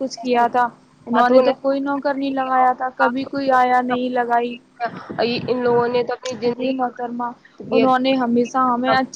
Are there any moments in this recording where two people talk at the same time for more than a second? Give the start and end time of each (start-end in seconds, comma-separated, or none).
none